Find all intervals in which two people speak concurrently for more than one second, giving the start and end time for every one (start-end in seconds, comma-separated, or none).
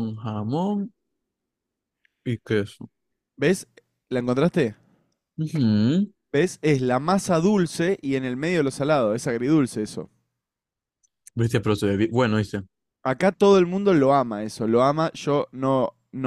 none